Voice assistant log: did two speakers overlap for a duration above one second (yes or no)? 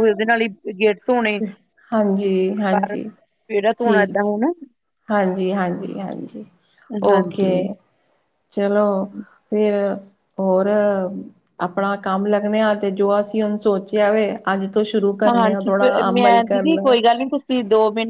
yes